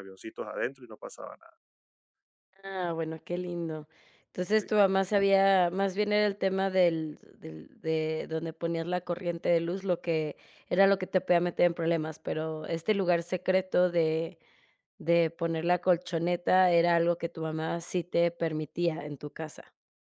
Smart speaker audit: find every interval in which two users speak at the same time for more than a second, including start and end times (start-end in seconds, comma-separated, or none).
none